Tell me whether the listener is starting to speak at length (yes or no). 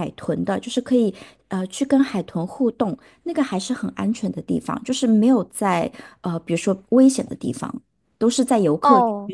yes